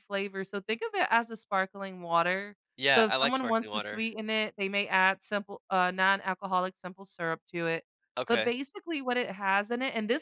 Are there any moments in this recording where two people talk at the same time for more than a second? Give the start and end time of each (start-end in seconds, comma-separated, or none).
2.8-4.0